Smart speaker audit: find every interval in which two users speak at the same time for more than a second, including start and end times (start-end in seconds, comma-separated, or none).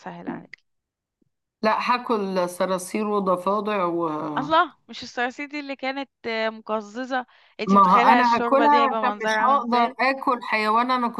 7.7-10.0